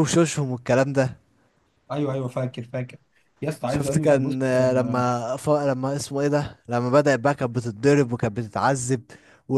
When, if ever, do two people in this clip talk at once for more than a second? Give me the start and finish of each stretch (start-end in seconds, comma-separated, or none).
3.6-5.0